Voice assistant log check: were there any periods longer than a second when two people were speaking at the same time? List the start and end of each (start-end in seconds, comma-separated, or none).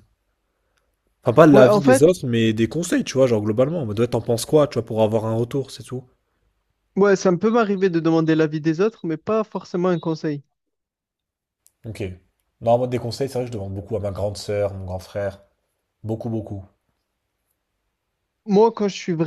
none